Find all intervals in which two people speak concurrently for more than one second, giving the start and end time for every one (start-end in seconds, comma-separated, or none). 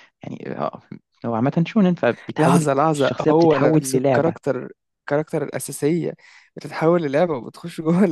2.4-4.4